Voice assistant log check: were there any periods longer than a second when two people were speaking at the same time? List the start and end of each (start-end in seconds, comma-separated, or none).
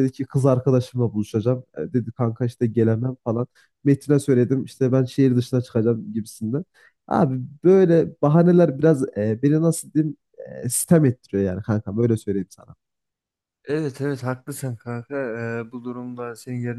none